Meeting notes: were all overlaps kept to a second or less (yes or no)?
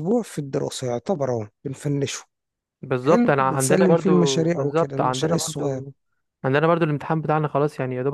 no